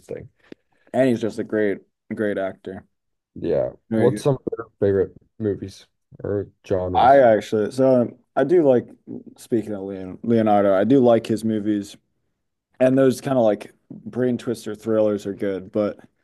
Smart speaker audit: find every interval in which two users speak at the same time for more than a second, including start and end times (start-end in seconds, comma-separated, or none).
none